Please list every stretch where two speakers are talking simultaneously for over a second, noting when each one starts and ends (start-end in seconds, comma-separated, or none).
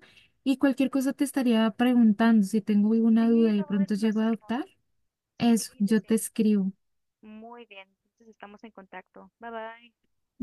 3.2-4.5